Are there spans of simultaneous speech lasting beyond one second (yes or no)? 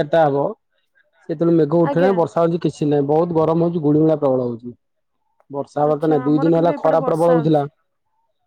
yes